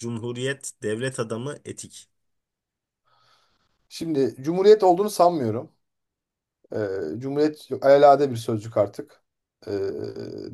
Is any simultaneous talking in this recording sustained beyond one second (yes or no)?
no